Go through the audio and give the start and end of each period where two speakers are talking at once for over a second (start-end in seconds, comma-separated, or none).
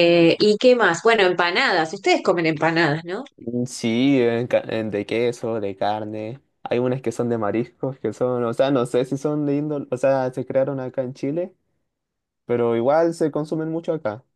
none